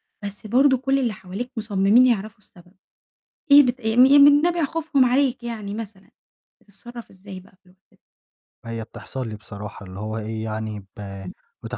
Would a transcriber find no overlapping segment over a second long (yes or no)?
yes